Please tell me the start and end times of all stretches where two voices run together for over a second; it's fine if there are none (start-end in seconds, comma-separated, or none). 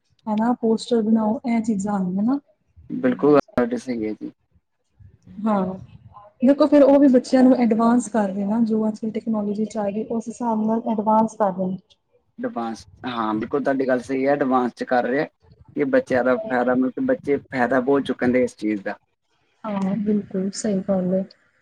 none